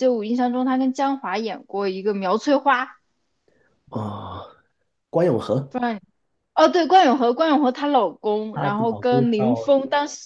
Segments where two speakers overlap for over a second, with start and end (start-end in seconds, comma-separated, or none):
8.5-9.7